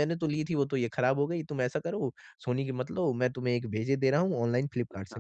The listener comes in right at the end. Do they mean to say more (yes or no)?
no